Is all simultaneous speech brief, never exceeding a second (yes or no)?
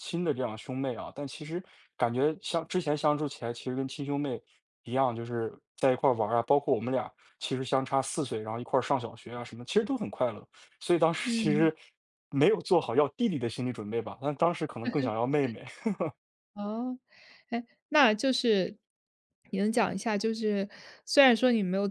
yes